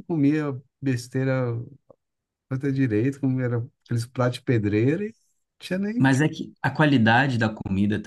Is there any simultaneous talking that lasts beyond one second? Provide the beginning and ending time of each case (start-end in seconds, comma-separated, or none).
none